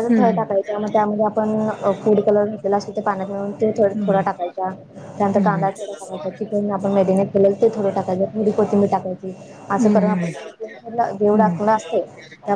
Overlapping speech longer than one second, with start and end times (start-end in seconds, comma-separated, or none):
9.8-11.6